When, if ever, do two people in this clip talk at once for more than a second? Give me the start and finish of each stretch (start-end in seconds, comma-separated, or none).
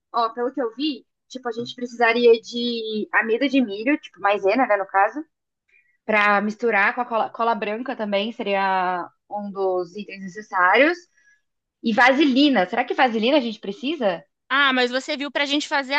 none